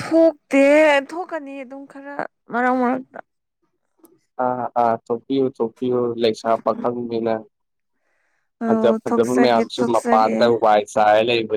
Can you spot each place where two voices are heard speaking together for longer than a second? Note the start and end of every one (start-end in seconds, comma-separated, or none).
8.6-10.3